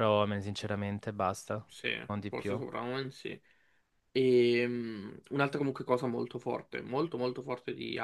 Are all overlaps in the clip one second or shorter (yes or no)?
yes